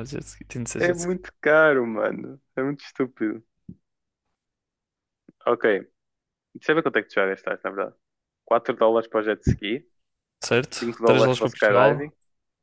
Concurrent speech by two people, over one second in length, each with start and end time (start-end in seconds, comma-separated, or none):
10.8-12.1